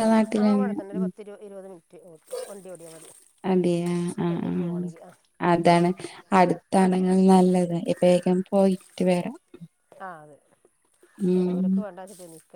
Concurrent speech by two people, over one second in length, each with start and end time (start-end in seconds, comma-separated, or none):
none